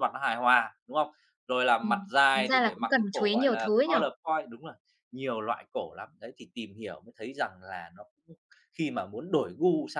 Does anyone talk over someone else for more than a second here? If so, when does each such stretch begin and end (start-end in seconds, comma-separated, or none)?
1.8-3.9